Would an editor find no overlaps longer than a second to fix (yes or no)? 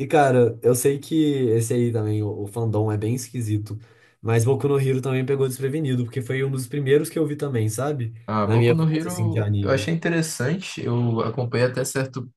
no